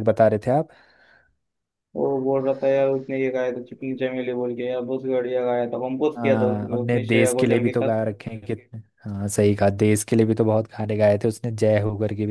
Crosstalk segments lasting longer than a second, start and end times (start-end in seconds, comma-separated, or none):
6.2-8.0